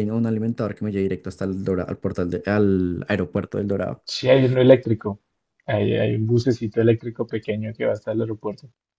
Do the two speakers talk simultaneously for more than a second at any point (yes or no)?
no